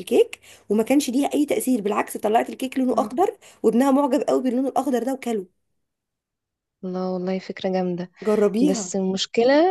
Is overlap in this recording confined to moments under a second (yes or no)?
yes